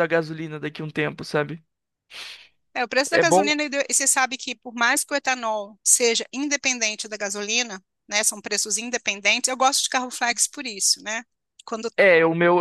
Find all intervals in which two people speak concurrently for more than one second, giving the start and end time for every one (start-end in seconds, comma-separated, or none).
none